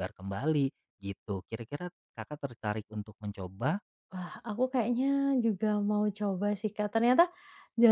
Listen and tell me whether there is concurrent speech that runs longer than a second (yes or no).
no